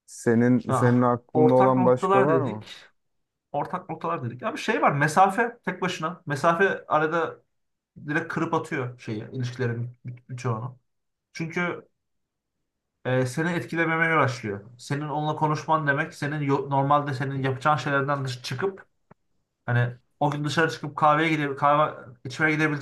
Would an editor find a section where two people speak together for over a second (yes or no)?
yes